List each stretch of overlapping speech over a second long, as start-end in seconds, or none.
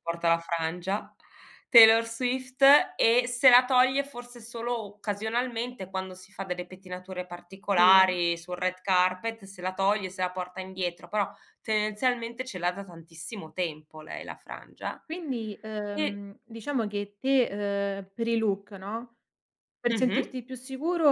none